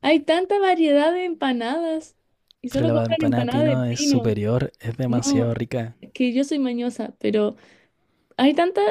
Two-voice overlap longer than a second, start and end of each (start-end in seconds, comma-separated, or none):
2.7-4.3